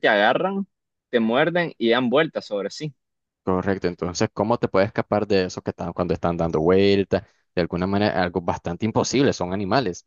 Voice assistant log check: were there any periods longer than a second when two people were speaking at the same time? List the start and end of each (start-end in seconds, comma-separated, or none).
none